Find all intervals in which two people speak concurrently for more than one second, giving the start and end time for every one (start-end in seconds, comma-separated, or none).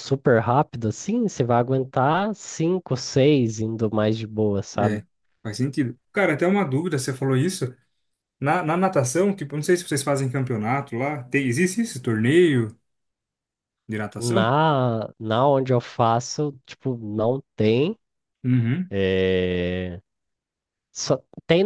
none